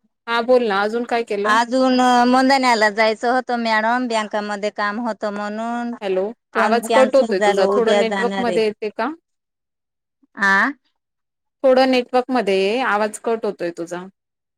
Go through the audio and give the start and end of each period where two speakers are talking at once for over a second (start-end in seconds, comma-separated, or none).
6.5-8.6